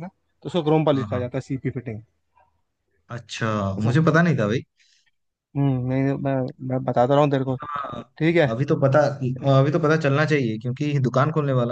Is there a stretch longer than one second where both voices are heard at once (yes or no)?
no